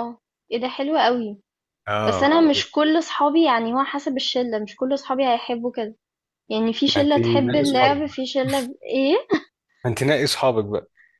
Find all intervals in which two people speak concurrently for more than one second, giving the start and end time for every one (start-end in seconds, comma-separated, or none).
7.0-8.3